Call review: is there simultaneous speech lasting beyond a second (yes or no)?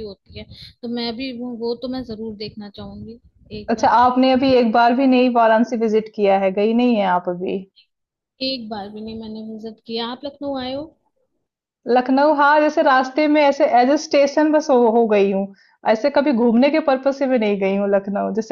no